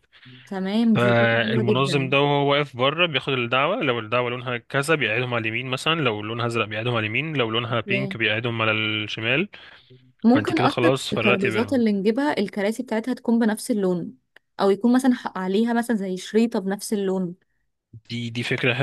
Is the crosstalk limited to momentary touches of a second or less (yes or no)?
no